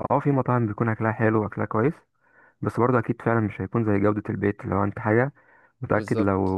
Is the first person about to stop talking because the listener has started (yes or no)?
no